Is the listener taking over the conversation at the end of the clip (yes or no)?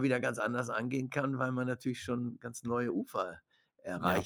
yes